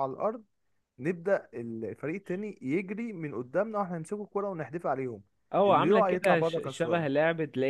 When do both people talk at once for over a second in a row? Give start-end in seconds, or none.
5.7-7.1